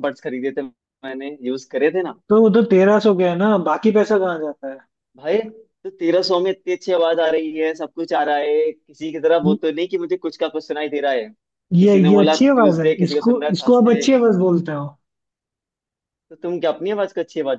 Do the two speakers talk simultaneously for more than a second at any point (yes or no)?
yes